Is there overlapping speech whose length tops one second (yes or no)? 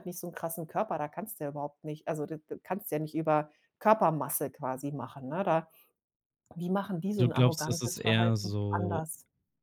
yes